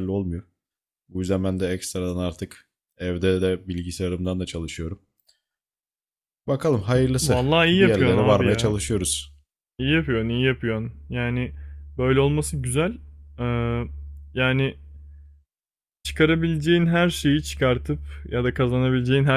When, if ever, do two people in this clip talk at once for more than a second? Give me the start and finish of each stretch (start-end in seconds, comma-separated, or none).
7.2-8.7